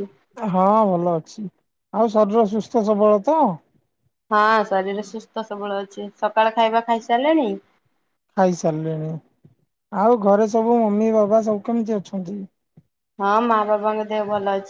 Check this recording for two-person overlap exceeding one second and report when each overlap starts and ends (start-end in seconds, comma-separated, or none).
none